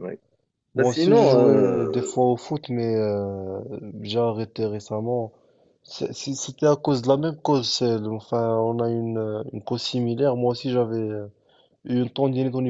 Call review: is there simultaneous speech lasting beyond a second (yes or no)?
yes